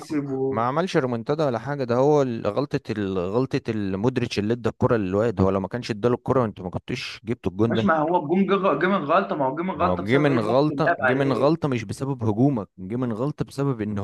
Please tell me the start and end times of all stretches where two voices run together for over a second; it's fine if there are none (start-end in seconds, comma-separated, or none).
9.7-11.5